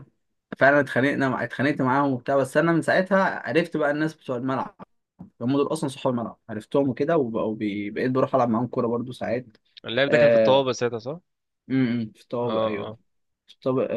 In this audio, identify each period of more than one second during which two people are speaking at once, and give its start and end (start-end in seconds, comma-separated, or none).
none